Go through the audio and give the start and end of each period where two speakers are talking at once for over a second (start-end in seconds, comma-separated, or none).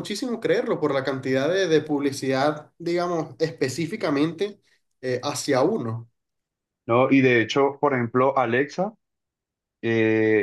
none